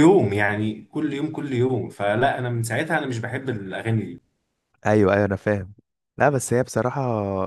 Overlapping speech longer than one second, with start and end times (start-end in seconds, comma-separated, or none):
none